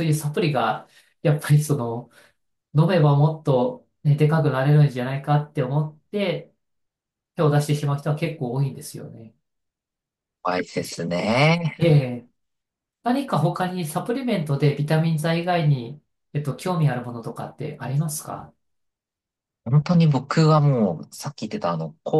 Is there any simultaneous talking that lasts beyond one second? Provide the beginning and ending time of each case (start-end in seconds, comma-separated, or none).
none